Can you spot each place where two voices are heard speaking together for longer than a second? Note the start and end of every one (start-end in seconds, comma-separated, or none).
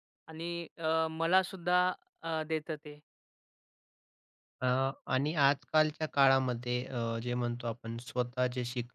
none